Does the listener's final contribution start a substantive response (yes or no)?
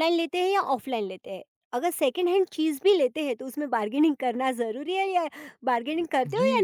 yes